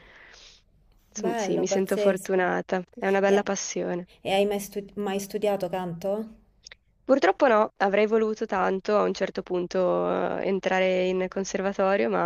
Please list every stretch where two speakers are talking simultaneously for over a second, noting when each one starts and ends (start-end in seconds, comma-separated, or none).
1.2-2.4